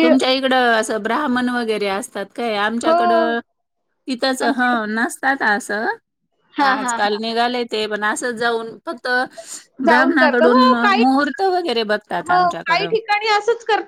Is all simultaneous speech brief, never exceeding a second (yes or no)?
yes